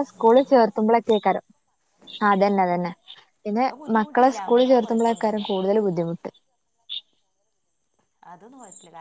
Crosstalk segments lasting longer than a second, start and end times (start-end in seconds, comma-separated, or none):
3.7-5.7